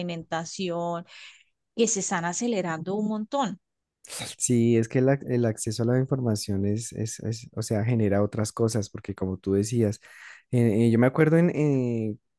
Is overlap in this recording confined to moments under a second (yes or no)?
yes